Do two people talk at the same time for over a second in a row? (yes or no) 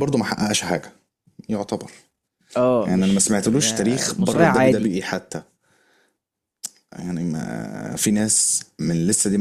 yes